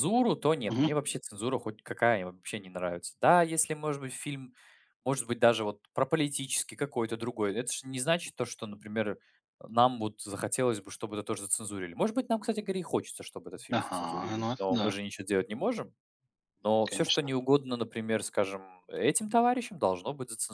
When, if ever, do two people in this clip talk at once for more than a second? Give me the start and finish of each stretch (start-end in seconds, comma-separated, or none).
13.7-14.9